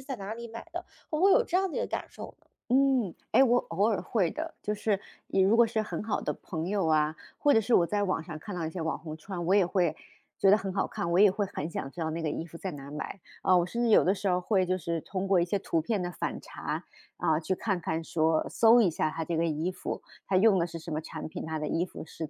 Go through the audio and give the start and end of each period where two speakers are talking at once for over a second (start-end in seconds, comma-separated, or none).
none